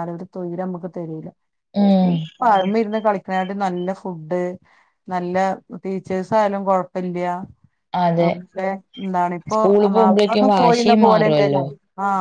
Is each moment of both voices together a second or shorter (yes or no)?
no